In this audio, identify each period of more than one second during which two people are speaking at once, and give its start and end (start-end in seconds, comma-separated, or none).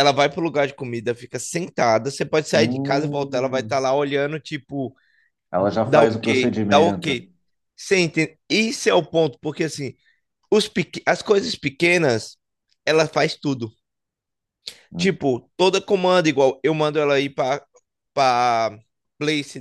2.5-3.8, 5.8-7.2